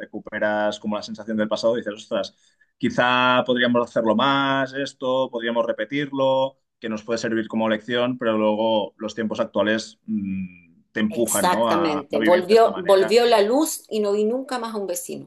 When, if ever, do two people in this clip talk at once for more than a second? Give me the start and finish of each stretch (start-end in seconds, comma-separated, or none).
11.1-13.2